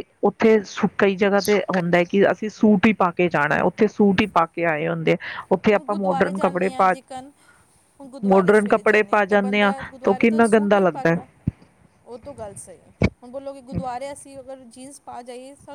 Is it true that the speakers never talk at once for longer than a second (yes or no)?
no